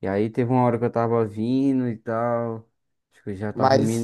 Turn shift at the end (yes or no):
no